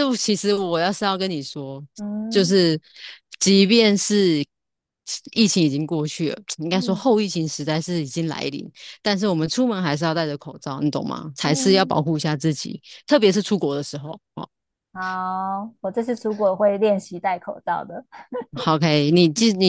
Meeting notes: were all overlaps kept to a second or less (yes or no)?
yes